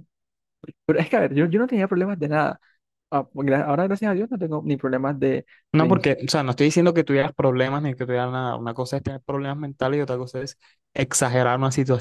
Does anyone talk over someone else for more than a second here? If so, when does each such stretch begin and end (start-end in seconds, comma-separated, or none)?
none